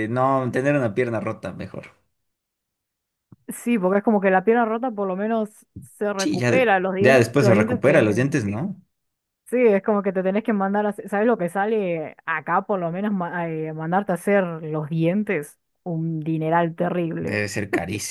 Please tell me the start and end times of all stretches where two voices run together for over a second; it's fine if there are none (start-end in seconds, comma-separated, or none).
6.2-8.2